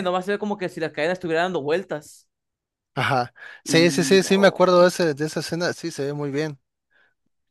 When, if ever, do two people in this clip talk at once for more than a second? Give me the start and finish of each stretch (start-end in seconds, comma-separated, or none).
3.6-4.9